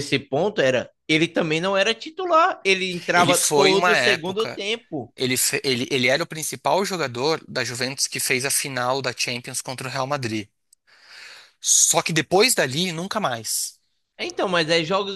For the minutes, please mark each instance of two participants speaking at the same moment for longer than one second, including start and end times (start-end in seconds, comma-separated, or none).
3.1-4.6